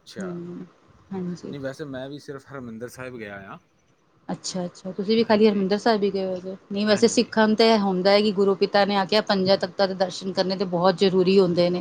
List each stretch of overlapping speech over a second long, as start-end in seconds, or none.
none